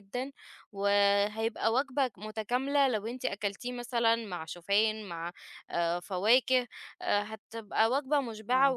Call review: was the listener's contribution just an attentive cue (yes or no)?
yes